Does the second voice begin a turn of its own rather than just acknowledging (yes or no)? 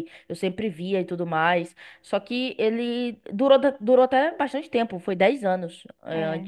no